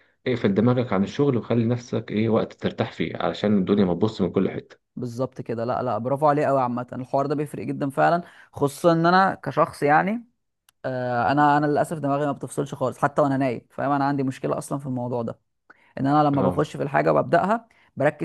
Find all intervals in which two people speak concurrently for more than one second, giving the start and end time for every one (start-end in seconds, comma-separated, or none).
none